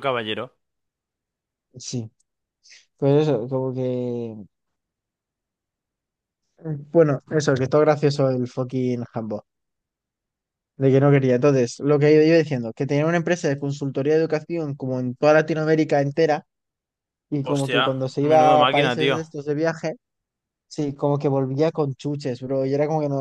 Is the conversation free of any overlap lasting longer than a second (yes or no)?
no